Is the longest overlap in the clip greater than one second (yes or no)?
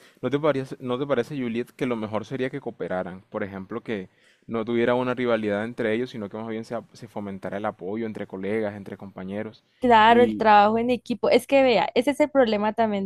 no